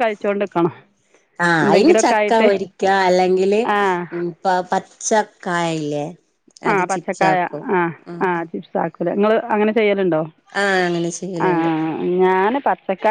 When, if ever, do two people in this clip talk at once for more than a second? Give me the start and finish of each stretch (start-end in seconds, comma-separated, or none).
none